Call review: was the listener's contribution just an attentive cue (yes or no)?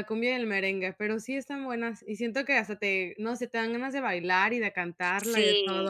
no